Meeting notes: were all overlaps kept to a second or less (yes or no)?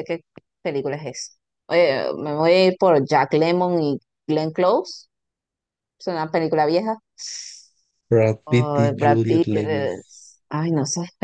no